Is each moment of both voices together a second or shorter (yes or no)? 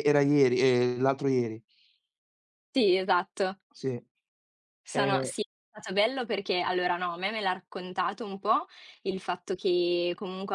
yes